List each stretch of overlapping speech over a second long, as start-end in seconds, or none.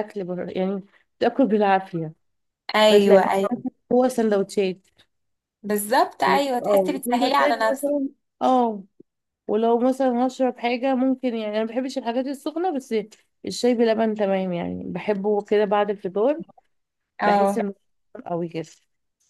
6.3-7.9